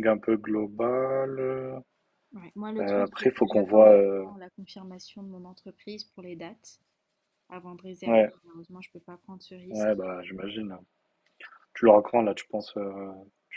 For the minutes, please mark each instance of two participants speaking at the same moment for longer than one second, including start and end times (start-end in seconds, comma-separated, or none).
2.8-4.2